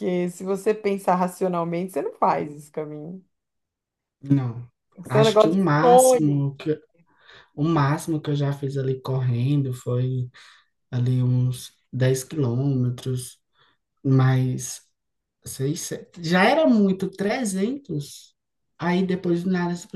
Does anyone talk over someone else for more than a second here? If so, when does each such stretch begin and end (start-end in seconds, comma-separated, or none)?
5.1-6.4